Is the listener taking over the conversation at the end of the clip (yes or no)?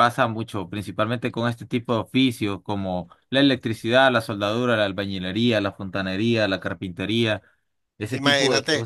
yes